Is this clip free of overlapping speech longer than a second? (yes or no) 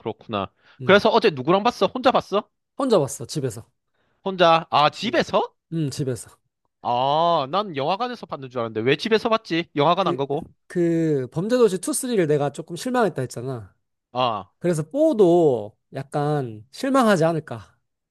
yes